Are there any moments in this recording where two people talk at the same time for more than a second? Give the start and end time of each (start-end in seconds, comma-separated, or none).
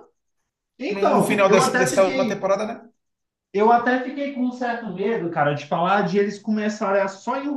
0.9-2.5